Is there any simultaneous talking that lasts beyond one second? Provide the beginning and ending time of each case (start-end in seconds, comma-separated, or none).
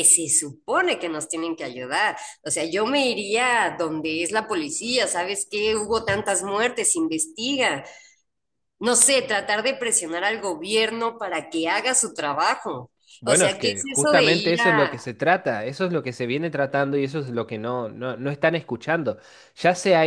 13.3-15.1